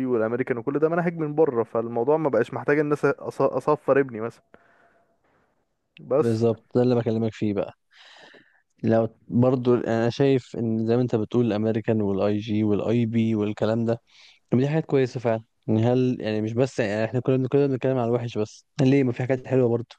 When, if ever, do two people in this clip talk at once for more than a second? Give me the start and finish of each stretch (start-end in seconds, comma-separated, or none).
none